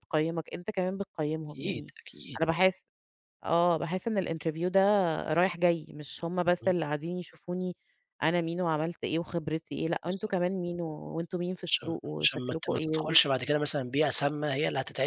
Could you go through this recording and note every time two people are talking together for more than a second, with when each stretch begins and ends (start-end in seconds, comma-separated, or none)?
11.7-13.1